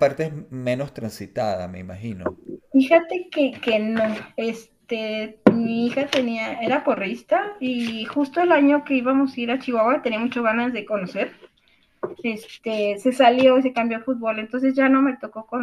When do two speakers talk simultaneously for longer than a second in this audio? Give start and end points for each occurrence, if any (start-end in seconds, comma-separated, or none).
none